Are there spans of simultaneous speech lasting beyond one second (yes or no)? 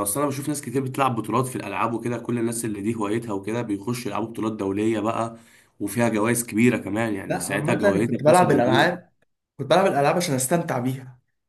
yes